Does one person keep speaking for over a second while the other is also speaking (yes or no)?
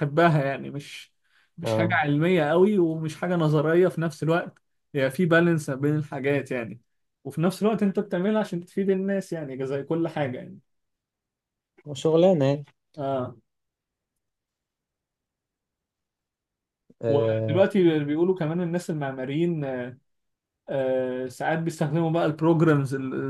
no